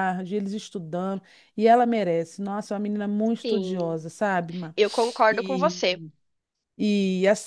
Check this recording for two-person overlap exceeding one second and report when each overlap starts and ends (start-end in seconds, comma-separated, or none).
none